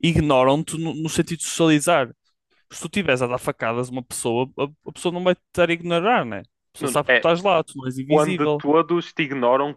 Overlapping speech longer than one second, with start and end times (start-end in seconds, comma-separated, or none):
none